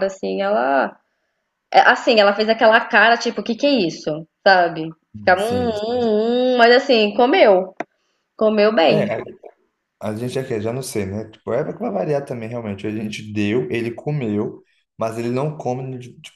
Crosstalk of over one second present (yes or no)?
no